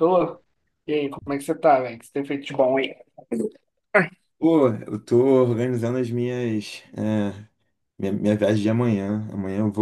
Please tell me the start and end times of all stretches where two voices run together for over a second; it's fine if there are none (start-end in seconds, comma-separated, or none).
none